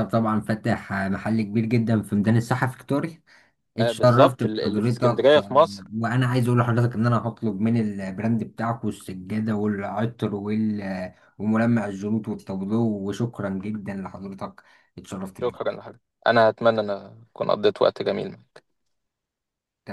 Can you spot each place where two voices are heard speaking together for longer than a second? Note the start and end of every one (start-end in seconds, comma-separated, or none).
3.8-5.8